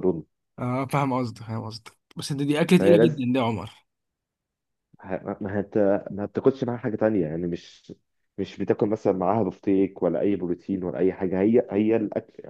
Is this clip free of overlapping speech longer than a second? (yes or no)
yes